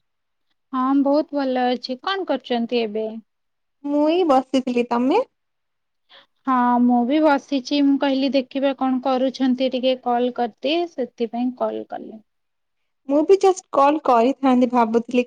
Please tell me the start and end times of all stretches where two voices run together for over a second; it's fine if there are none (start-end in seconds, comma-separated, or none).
none